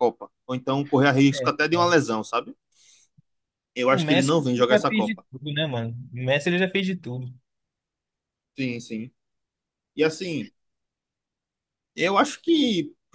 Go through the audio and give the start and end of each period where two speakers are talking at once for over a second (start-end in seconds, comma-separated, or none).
3.9-5.2